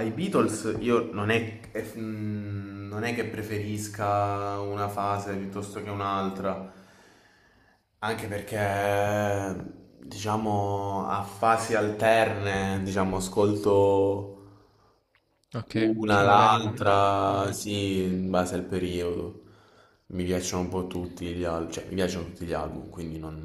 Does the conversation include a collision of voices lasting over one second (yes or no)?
yes